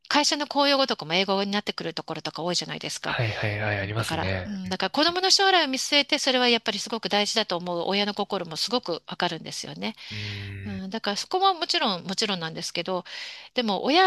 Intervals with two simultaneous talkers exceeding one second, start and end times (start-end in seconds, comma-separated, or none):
none